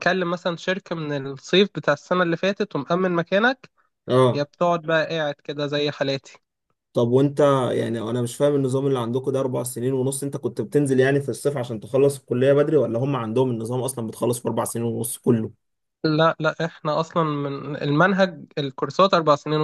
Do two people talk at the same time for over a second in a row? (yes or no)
no